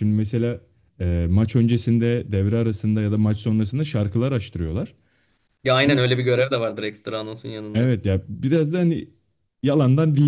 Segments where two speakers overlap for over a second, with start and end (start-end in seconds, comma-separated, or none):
none